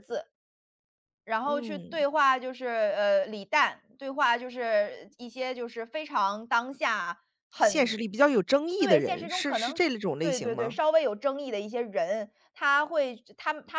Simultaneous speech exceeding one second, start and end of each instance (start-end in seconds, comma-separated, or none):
8.8-10.8